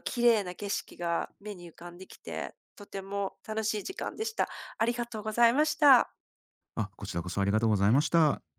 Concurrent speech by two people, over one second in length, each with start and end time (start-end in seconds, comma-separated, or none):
none